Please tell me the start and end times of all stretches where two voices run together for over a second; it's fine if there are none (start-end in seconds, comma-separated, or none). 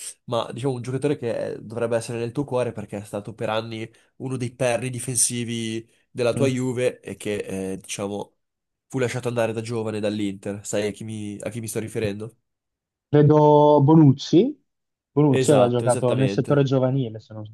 15.3-16.7